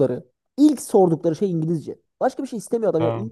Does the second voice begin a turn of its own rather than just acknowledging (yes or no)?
no